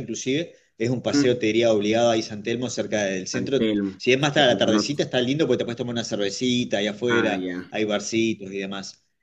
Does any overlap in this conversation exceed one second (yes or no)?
yes